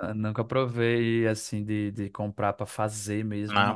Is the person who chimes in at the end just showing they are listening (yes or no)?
no